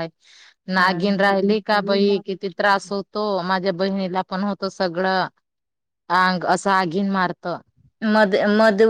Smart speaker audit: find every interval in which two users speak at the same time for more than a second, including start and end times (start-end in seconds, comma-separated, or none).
0.8-2.2